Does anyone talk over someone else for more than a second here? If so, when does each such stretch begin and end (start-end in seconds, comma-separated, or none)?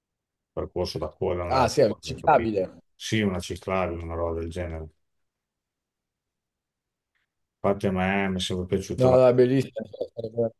1.5-2.8